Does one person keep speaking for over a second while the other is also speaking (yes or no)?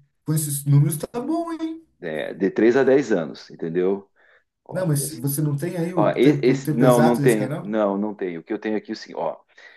yes